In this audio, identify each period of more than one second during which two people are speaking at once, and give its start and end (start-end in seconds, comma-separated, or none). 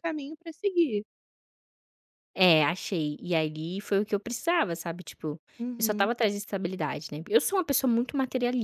none